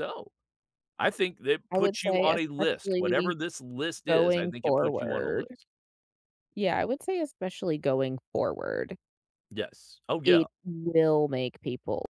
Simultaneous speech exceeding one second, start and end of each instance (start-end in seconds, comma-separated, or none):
1.7-3.3, 4.1-5.5